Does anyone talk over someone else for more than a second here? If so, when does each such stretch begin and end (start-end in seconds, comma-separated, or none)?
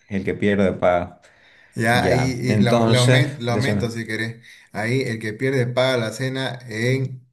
1.9-3.8